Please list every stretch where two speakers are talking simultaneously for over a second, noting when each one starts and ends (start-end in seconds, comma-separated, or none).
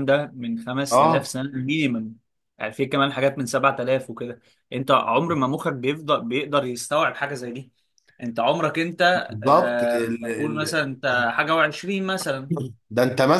9.3-10.8